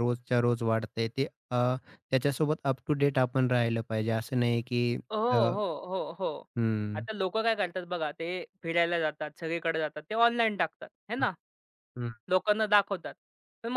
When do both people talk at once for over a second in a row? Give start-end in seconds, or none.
none